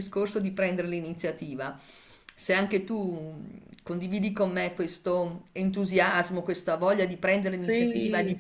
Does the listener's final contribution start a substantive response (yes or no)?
no